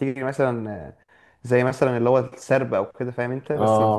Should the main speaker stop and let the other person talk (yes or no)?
yes